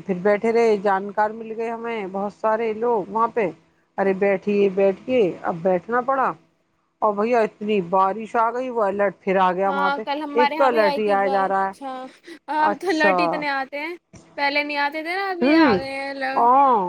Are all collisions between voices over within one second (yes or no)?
yes